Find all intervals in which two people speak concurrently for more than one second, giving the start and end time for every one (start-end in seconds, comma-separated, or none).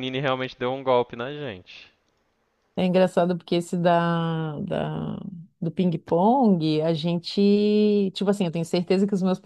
none